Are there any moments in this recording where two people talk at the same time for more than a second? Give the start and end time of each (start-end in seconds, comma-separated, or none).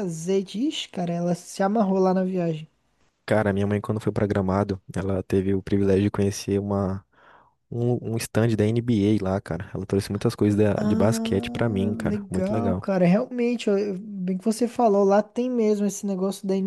10.8-12.8